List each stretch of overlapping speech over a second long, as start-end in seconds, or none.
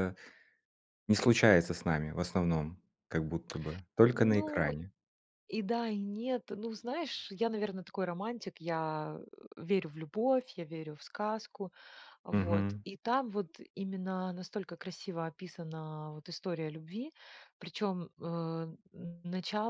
none